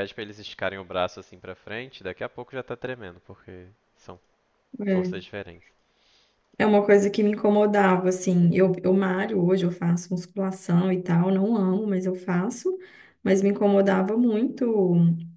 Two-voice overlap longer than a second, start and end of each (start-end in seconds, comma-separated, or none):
none